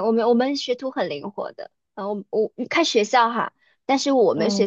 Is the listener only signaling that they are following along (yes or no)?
yes